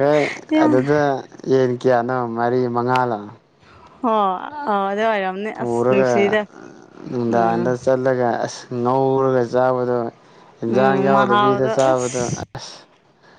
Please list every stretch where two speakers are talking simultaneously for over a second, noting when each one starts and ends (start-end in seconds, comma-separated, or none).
10.7-12.4